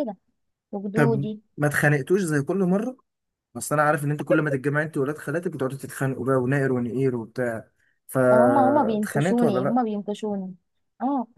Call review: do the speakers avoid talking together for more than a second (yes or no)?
no